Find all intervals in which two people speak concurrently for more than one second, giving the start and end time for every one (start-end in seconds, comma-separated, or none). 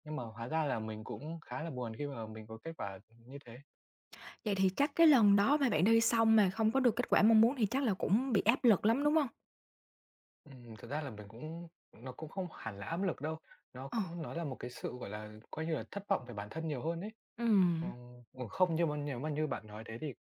none